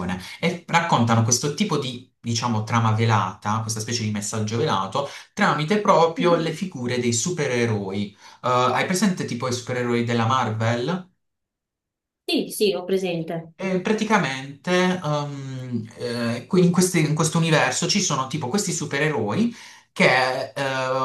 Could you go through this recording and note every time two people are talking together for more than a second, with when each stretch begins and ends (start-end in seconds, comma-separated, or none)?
none